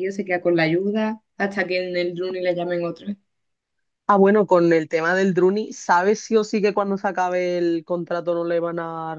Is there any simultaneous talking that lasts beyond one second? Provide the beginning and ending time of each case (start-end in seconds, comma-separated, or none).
none